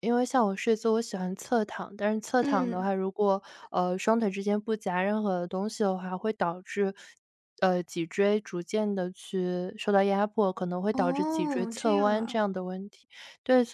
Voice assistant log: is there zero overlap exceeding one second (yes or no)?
no